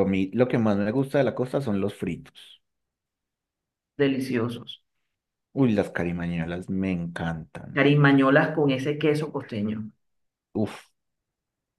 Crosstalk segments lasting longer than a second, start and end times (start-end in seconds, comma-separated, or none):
none